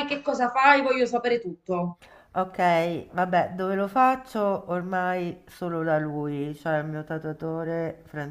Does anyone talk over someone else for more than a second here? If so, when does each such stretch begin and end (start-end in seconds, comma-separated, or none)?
none